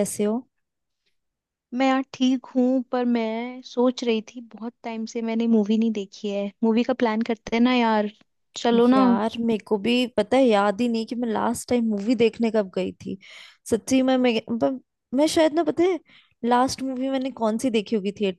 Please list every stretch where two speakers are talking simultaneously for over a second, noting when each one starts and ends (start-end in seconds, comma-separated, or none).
none